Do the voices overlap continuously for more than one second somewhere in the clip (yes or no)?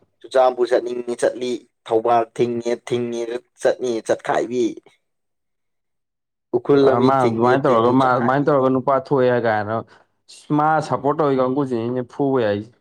yes